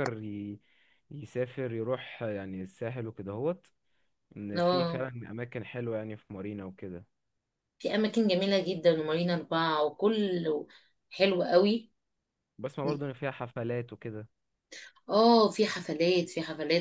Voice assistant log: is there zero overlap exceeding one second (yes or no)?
yes